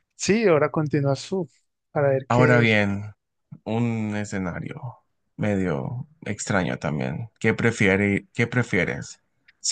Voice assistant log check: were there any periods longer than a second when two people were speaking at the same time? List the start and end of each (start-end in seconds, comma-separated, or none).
none